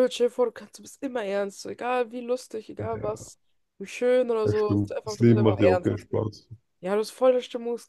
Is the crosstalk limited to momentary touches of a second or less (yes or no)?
no